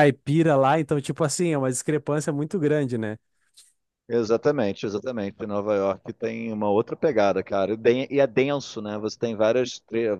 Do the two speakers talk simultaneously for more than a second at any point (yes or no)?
no